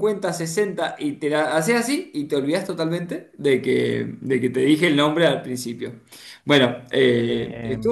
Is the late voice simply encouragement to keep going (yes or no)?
yes